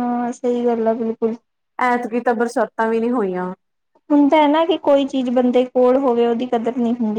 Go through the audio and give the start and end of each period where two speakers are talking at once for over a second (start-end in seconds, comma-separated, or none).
none